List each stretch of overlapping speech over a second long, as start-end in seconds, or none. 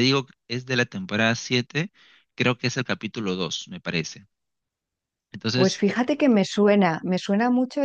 none